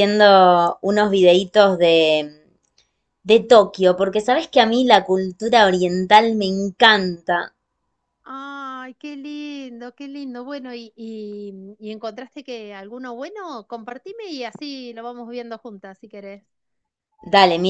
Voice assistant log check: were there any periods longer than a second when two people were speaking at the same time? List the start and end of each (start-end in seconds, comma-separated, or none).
none